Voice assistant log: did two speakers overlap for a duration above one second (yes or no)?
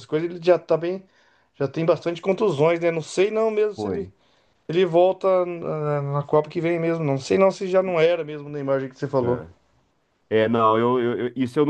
no